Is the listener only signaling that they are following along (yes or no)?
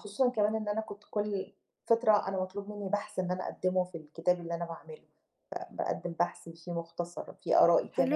no